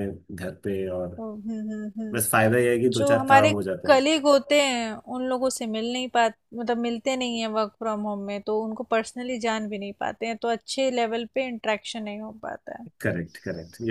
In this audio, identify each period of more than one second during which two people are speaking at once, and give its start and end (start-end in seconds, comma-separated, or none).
2.1-4.0